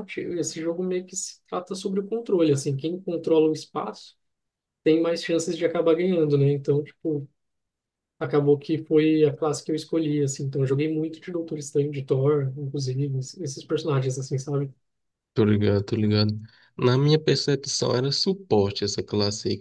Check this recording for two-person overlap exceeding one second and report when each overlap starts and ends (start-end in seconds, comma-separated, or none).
none